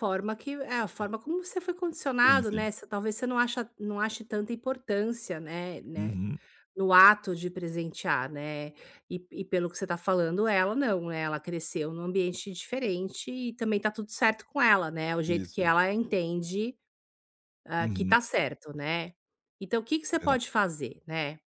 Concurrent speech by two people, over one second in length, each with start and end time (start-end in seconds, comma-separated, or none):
none